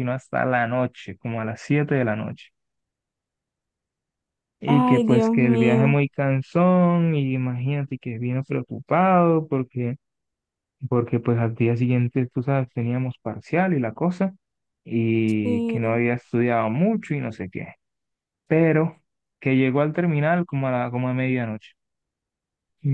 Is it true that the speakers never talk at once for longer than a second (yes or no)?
no